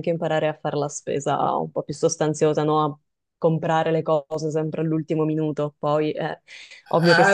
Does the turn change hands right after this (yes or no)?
yes